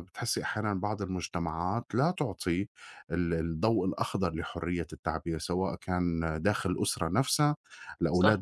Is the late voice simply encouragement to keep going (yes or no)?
yes